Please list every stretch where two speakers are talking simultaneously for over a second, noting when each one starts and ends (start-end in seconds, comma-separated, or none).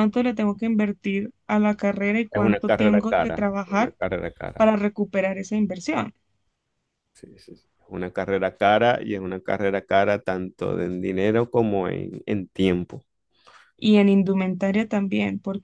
2.3-4.0